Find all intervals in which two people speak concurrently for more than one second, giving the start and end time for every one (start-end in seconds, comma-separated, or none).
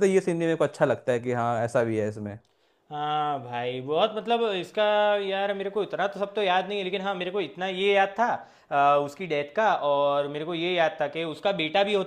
none